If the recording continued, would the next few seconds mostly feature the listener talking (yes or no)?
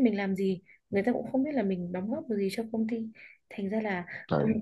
no